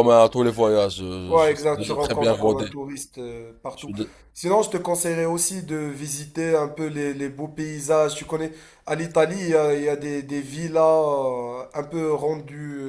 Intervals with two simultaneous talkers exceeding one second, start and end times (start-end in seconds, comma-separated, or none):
1.3-2.6